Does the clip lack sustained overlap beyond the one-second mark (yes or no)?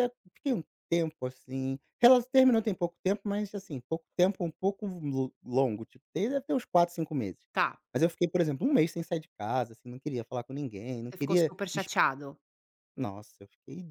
yes